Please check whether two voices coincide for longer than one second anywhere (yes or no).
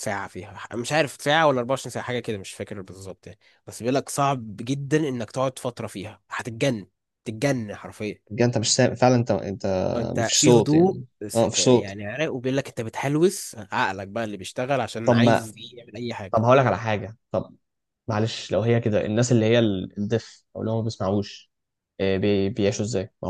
yes